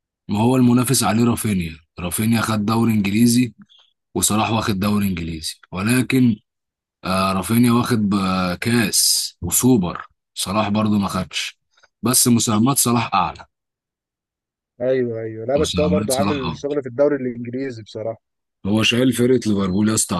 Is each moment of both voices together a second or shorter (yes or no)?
no